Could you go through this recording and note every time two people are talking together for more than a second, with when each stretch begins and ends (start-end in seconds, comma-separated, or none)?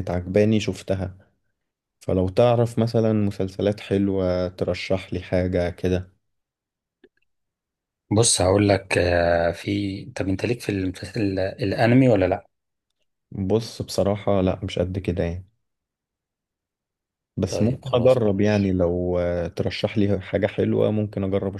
17.5-18.7